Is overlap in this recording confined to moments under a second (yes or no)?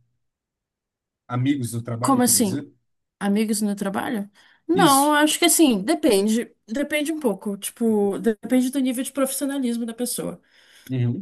yes